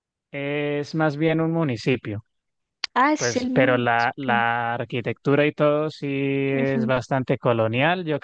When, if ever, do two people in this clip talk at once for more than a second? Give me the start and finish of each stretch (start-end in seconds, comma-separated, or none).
3.2-4.5